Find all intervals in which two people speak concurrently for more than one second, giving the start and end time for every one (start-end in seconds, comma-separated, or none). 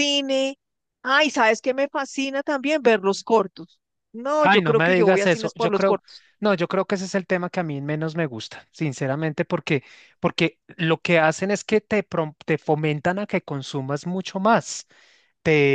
4.4-6.0